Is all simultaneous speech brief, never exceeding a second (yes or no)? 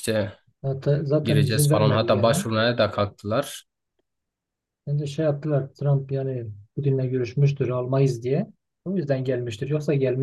no